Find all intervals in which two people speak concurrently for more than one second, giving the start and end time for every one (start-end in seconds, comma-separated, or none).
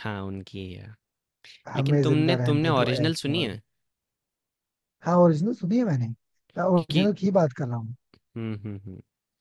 1.8-3.6